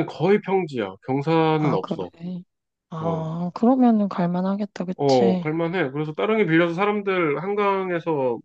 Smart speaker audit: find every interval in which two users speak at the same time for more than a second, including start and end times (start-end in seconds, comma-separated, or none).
none